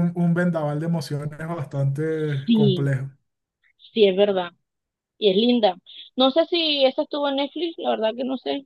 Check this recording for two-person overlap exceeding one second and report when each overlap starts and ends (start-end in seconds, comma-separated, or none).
none